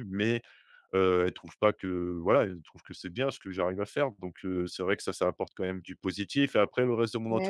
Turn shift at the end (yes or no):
no